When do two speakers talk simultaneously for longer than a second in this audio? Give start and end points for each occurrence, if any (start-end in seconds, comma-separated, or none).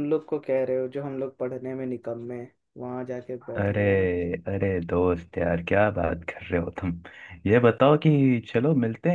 none